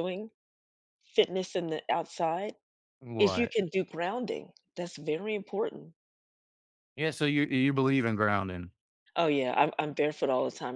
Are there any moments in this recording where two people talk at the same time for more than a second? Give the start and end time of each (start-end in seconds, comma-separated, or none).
none